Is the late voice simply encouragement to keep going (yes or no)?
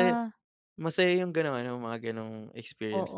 no